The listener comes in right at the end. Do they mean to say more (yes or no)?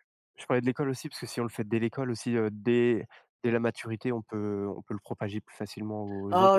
yes